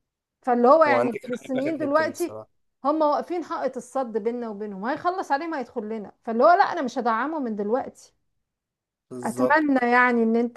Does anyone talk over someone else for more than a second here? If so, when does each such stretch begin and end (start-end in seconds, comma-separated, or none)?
0.9-2.4